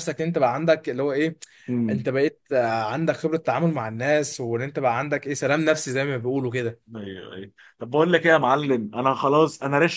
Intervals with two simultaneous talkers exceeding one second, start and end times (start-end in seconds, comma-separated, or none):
none